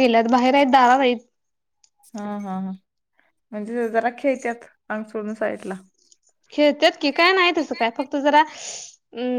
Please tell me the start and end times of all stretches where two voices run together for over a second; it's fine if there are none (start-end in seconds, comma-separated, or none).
none